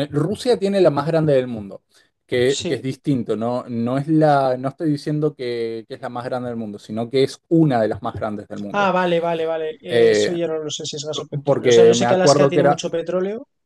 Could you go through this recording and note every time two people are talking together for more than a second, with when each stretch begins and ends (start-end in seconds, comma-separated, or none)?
11.4-12.8